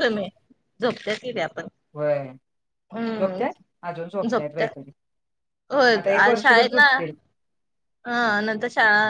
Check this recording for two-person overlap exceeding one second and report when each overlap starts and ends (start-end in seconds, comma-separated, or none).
none